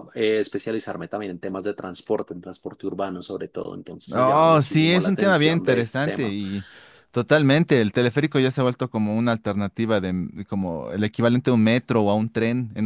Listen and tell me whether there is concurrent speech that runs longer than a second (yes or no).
yes